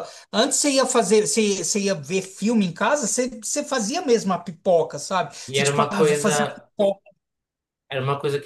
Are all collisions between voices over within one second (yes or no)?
no